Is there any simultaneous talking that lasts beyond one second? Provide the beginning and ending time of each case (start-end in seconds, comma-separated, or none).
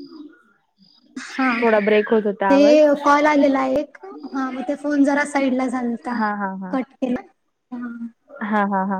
none